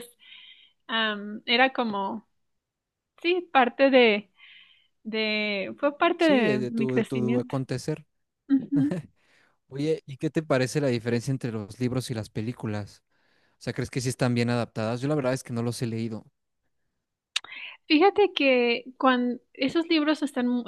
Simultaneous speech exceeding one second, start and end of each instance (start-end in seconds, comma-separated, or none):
6.2-7.5